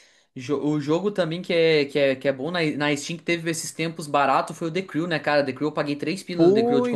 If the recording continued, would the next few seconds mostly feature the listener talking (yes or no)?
yes